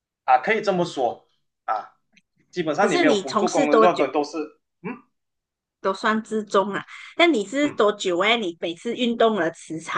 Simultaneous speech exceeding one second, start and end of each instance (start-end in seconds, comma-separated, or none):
2.8-4.1